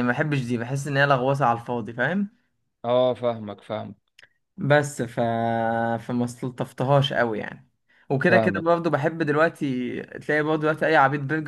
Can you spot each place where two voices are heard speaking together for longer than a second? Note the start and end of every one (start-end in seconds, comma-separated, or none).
none